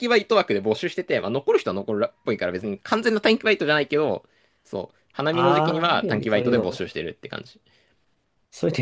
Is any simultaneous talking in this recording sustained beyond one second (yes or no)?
yes